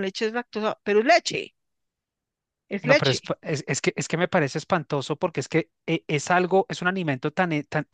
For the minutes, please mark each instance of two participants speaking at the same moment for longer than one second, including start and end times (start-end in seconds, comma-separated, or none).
none